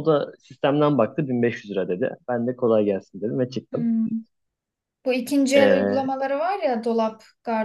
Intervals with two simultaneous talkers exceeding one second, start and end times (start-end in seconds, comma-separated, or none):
none